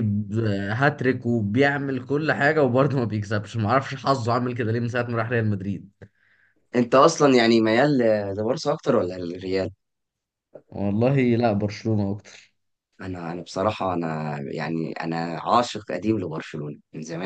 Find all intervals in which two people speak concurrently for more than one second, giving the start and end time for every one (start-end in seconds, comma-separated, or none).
none